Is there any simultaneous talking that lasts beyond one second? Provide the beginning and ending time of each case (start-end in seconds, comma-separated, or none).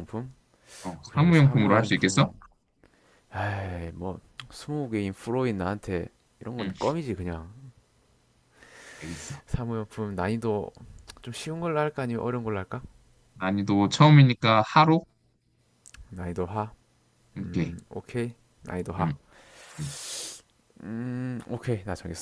1.1-2.3